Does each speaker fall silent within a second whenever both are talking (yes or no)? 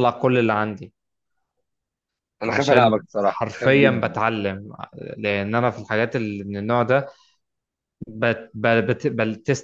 no